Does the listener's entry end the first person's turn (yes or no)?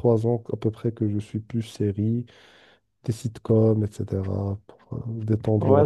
yes